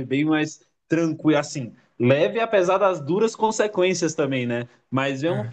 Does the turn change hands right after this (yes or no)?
no